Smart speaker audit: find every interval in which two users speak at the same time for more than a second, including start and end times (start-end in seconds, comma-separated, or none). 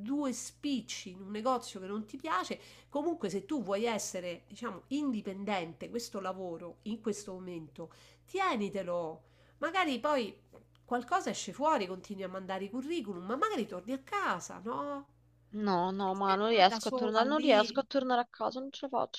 16.0-17.8